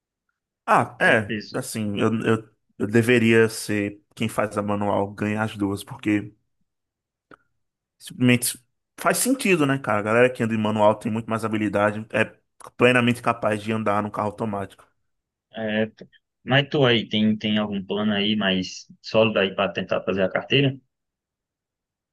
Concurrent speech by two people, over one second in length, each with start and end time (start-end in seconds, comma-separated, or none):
none